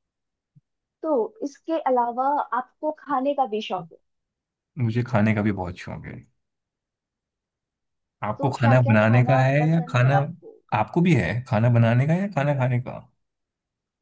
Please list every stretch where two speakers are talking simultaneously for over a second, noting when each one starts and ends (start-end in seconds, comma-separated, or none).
8.4-10.2